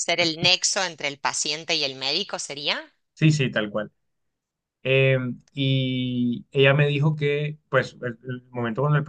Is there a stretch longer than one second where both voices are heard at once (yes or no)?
no